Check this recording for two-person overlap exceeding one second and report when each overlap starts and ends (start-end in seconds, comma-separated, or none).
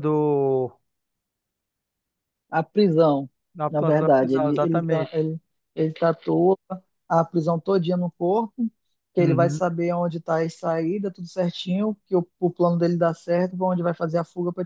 3.7-5.1